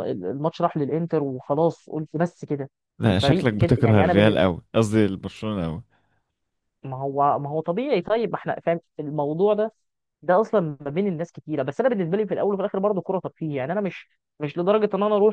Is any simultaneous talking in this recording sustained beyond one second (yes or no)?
yes